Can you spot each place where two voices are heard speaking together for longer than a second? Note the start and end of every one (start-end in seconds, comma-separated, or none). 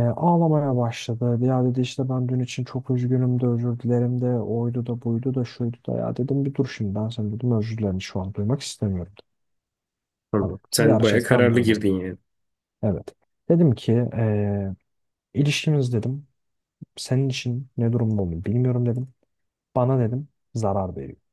10.4-11.7